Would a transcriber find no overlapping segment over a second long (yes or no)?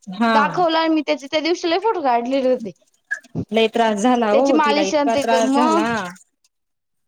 no